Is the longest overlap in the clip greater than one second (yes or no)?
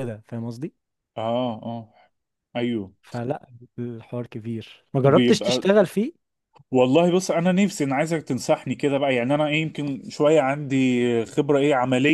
no